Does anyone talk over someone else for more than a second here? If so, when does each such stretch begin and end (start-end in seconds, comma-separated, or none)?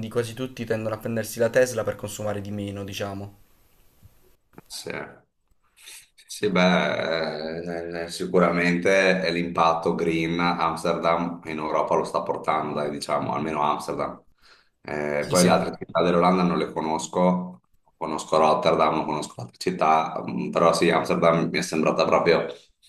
none